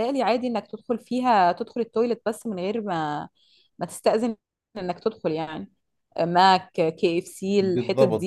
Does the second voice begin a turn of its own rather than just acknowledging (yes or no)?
yes